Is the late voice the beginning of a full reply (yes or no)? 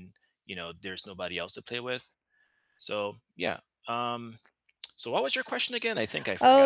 yes